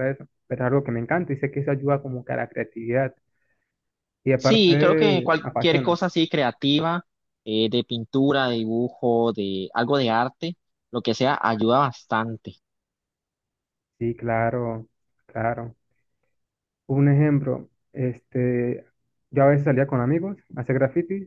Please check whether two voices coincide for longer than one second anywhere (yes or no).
yes